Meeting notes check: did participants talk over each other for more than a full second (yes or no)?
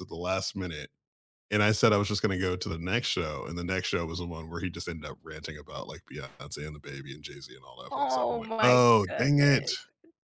yes